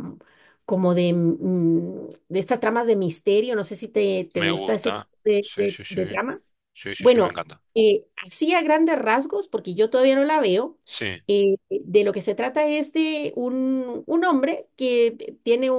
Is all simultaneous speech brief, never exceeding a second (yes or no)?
no